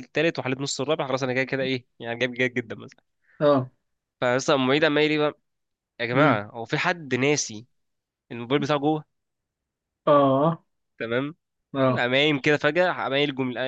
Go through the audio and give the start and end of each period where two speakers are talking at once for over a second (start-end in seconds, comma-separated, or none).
none